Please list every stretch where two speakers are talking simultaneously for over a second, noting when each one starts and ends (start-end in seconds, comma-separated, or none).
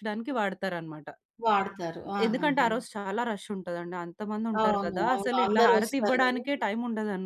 4.6-6.4